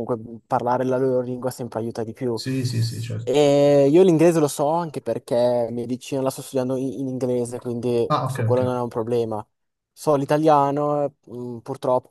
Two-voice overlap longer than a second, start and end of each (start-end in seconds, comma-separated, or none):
none